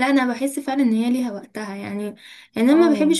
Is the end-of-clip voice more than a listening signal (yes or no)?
no